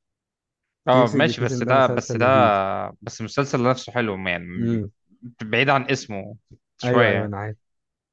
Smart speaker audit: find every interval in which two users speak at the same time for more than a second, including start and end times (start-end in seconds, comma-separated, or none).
0.9-2.3